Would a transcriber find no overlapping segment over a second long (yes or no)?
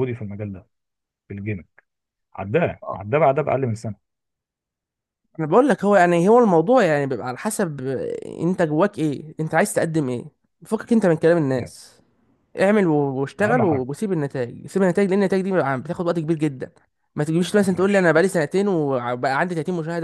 yes